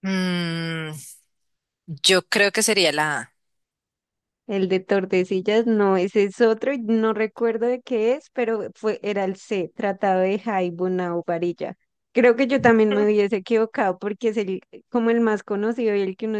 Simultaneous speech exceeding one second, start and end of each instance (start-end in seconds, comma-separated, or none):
none